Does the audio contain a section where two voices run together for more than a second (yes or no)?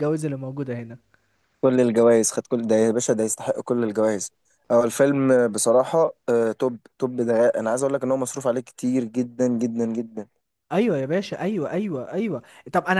no